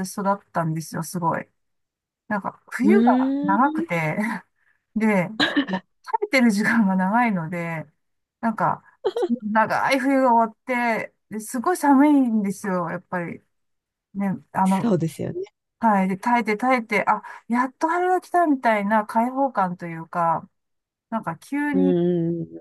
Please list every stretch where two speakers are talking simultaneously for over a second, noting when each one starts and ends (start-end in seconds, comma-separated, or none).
none